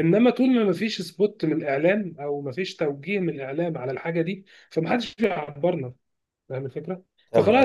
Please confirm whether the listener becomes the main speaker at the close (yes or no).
no